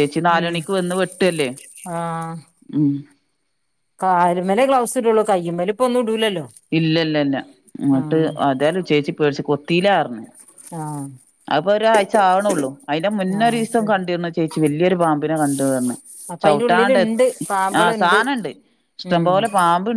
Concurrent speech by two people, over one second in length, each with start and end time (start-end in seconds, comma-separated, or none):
16.4-18.2